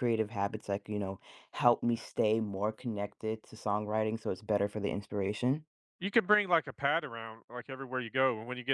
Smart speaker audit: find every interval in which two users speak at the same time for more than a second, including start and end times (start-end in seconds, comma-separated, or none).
none